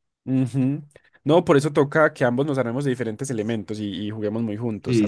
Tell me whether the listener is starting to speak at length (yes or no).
yes